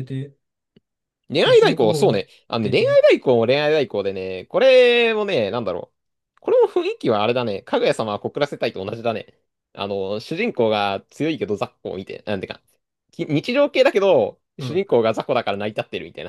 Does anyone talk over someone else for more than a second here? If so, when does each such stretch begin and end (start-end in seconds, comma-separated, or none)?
1.4-3.0